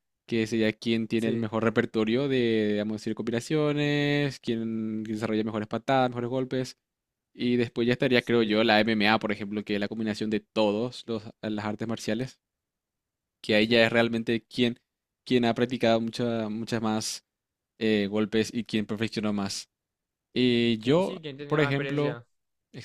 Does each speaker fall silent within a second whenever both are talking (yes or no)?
no